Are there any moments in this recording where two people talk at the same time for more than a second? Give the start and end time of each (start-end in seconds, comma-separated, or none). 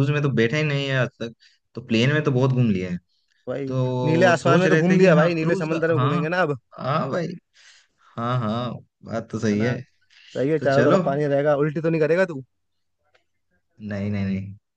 3.7-6.2